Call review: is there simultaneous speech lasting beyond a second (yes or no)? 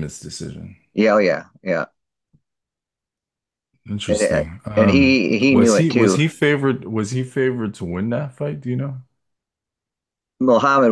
yes